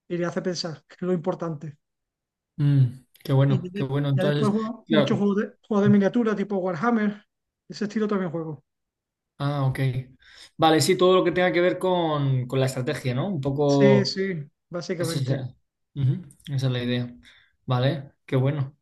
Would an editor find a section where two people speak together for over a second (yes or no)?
yes